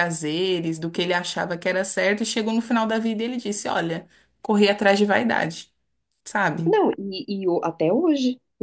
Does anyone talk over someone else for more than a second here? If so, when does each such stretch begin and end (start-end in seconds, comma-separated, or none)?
none